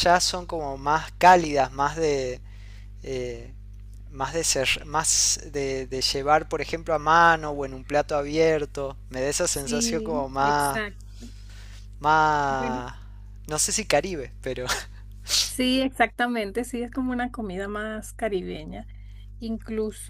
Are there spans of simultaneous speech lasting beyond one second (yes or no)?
yes